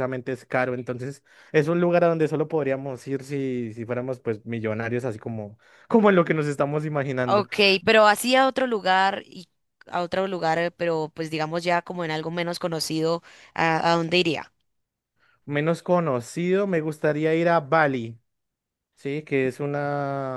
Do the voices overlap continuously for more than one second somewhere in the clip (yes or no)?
no